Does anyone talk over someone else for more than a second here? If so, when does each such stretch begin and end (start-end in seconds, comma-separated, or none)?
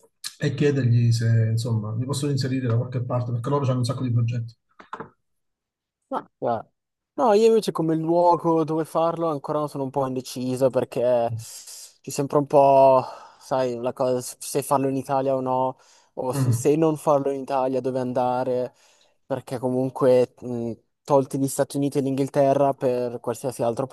none